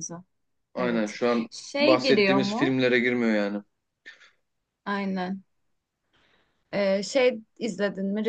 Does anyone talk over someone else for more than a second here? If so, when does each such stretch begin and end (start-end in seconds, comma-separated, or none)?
0.8-2.8